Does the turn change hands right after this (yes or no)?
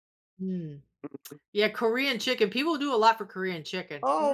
yes